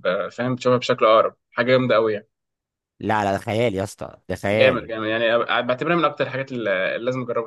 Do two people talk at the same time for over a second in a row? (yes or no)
no